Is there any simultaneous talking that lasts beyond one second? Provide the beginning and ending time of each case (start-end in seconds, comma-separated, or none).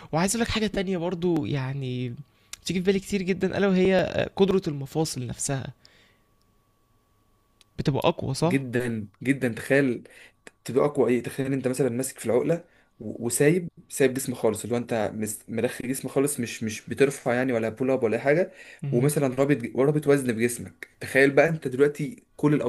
none